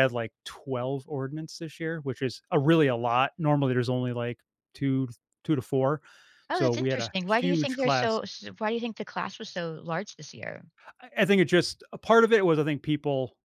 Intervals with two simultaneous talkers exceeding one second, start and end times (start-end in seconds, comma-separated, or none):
6.5-8.2